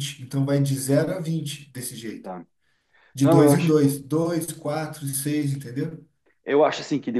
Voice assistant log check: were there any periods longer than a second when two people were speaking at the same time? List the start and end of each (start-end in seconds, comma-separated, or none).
none